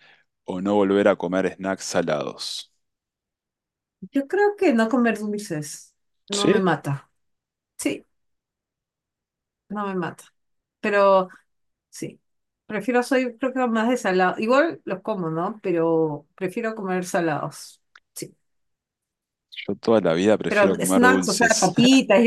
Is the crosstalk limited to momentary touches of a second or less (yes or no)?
no